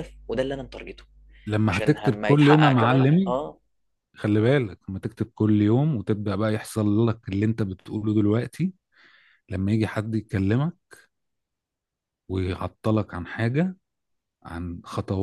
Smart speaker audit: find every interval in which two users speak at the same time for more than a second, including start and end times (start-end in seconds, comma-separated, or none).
1.6-3.4